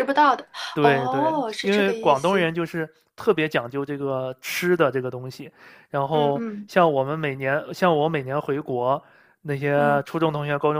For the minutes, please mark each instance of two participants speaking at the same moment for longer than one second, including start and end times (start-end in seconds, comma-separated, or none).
0.7-2.5